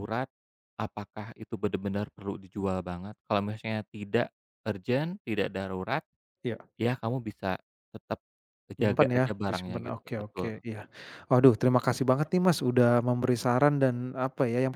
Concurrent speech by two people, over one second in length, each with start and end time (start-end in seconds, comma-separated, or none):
8.8-10.9